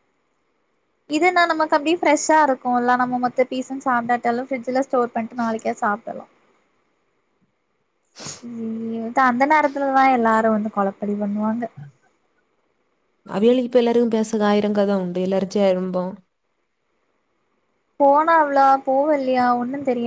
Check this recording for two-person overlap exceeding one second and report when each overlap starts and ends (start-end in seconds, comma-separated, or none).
none